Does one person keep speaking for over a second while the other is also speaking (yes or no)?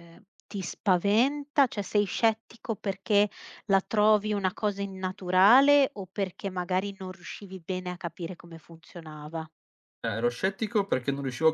no